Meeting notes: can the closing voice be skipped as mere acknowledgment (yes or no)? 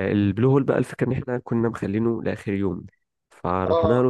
yes